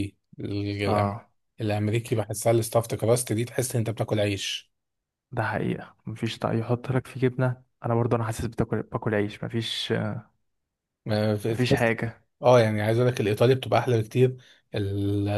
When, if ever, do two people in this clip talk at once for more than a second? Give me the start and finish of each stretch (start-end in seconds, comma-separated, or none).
none